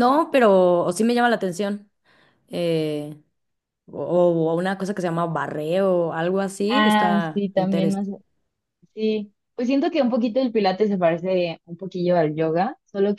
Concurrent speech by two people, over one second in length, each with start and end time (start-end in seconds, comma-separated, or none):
6.7-8.1